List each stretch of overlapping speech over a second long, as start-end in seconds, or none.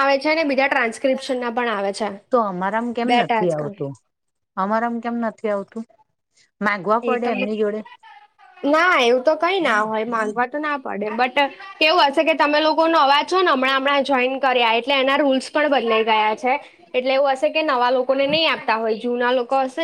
none